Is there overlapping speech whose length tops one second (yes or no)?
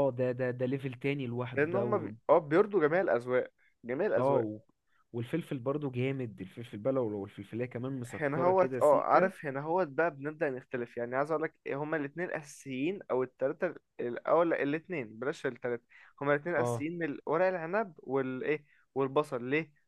yes